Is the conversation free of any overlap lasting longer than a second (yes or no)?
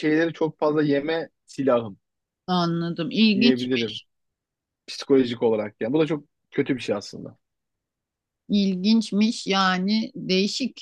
yes